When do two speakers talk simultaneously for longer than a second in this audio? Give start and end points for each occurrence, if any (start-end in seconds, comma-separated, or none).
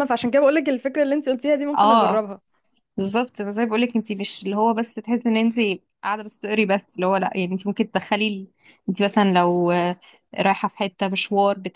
none